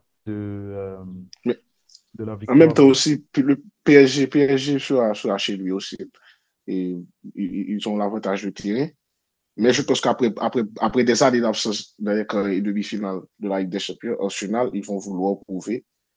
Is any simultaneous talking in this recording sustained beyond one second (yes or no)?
no